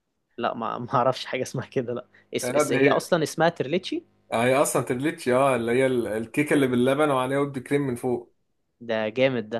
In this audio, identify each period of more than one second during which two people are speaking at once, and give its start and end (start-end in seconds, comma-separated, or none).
none